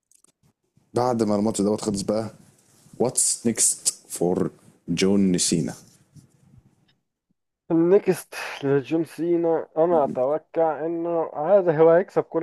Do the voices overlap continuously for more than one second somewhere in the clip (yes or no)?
no